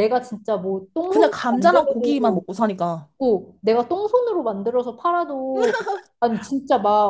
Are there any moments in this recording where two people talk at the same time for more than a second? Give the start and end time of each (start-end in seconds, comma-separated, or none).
1.1-2.4